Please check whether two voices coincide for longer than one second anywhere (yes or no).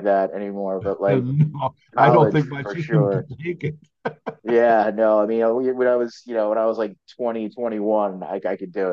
yes